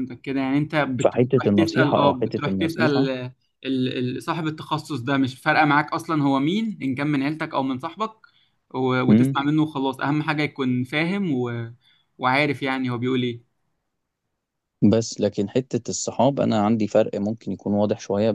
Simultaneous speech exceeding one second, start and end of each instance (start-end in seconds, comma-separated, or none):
1.0-3.1